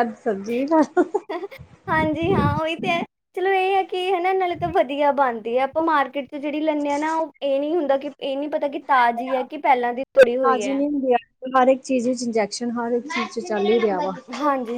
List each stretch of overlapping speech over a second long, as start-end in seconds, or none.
none